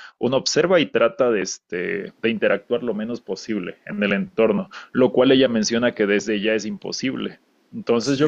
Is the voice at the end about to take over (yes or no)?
no